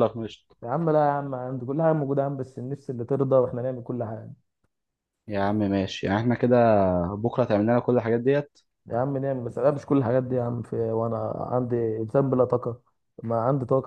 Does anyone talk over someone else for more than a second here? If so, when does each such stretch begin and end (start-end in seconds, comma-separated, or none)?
none